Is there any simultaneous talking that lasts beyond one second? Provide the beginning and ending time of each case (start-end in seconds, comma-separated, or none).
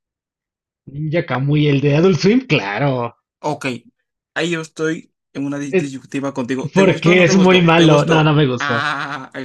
6.7-8.9